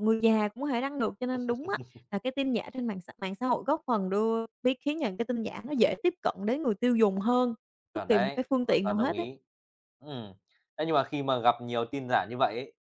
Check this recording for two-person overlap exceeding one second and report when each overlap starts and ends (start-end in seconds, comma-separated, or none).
7.9-9.3